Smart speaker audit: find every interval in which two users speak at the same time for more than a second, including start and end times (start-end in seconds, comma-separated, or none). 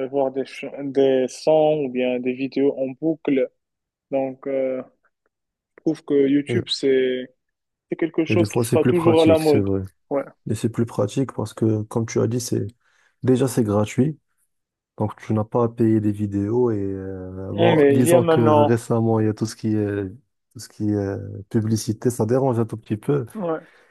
8.3-9.7, 17.5-18.8